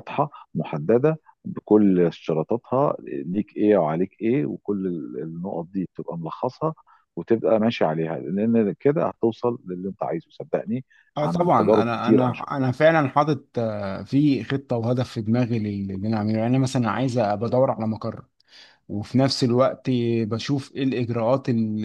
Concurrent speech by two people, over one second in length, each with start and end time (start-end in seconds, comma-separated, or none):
11.1-12.7